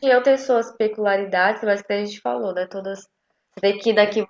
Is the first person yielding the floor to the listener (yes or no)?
no